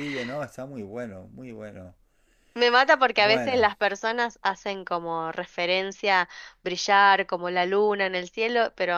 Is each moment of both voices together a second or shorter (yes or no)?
yes